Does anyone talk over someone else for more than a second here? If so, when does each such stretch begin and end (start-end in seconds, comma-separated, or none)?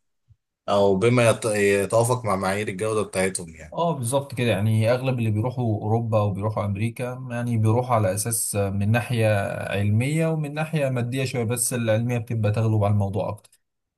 none